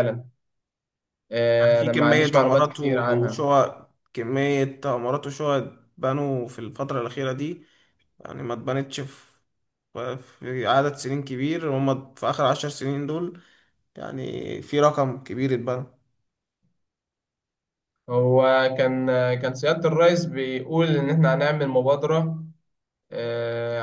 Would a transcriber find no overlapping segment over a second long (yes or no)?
no